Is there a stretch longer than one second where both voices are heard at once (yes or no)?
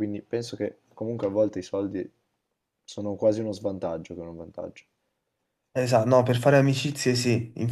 no